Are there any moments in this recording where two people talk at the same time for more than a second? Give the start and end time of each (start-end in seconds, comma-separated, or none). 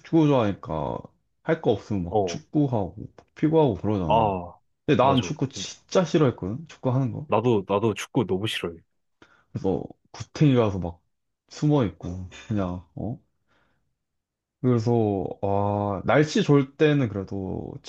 none